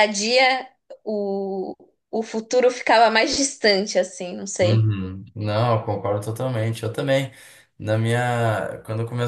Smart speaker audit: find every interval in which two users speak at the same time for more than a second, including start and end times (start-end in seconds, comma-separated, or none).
none